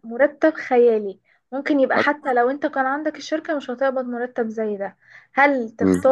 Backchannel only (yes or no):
yes